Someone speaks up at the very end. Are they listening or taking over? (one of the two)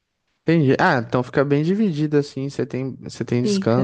listening